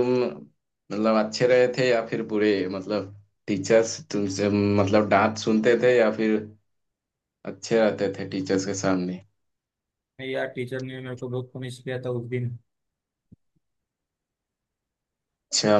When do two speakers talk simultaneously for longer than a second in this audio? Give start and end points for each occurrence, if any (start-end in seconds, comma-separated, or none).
none